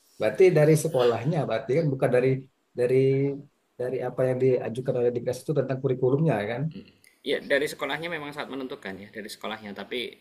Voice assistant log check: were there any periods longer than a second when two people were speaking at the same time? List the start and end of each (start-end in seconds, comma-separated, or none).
none